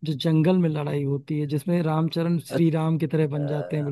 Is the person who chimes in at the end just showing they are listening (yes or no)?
no